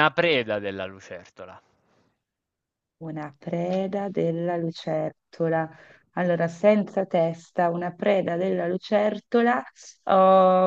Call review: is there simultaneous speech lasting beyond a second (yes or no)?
no